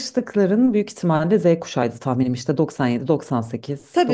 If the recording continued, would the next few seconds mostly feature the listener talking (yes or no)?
yes